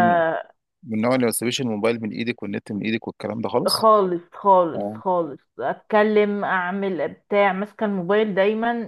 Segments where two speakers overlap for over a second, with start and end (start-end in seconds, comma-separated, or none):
none